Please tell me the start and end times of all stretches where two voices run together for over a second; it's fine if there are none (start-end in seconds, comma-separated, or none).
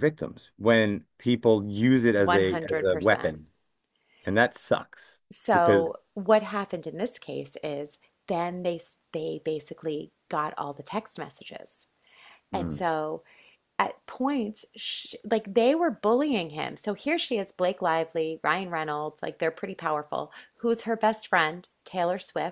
2.2-3.4